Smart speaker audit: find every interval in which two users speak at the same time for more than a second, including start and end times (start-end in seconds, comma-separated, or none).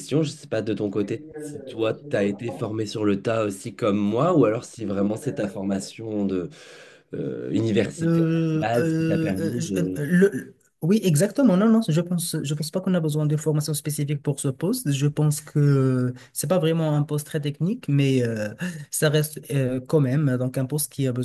8.0-10.0